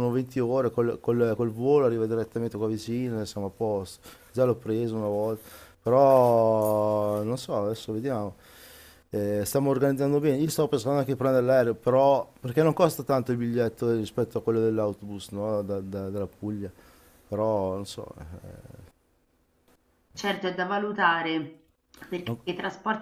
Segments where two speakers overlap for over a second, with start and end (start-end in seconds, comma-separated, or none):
none